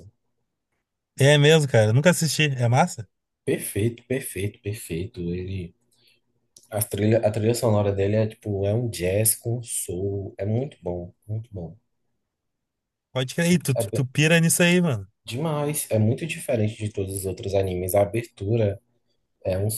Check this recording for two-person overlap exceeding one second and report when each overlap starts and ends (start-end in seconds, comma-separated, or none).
none